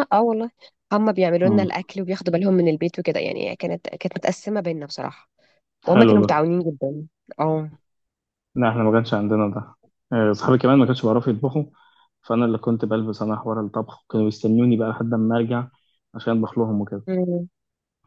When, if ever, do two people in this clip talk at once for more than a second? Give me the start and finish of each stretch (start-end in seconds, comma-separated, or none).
none